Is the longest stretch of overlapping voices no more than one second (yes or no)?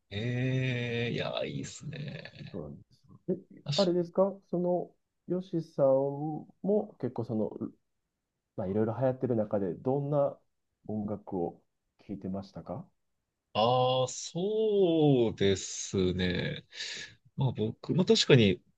yes